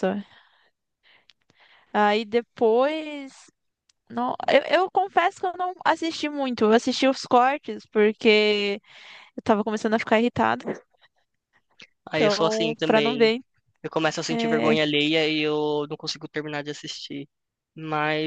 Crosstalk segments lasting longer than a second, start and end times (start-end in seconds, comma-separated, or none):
12.1-13.3